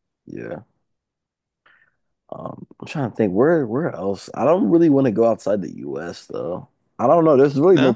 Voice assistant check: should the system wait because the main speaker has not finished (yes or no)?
yes